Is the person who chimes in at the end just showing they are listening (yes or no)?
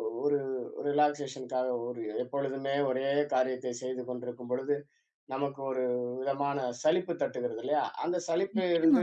yes